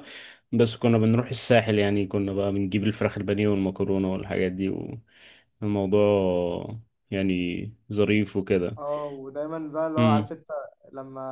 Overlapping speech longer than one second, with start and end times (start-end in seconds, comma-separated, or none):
none